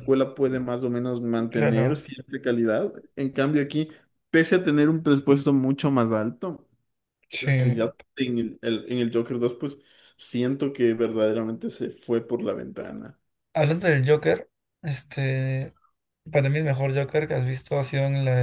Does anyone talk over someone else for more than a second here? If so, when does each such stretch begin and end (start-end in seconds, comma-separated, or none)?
none